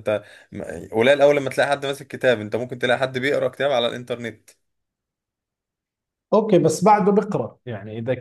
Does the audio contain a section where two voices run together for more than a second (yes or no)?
no